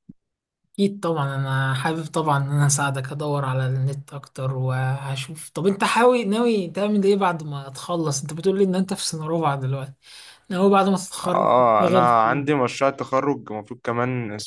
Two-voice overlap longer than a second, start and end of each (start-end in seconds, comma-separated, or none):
11.2-12.4